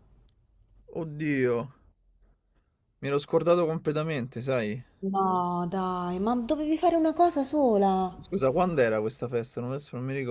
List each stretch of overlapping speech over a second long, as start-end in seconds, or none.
none